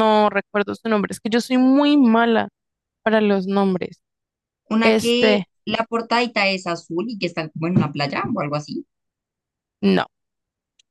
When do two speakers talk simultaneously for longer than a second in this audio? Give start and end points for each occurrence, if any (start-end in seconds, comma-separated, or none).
none